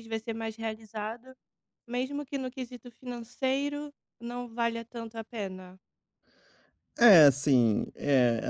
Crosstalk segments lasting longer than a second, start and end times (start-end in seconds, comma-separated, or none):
none